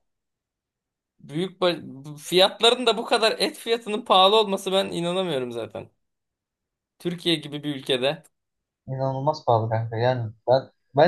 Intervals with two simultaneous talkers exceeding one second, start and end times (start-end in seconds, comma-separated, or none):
none